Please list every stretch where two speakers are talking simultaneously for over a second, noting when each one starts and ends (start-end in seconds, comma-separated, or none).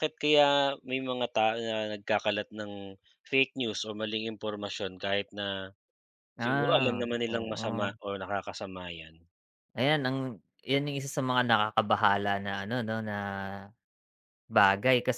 6.4-7.9